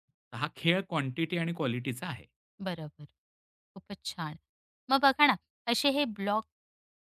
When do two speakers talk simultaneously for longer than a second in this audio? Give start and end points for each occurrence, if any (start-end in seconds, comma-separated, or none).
none